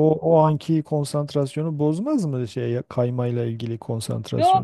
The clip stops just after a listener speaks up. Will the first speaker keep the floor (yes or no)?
no